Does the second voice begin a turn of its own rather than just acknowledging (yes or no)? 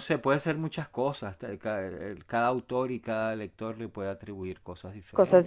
yes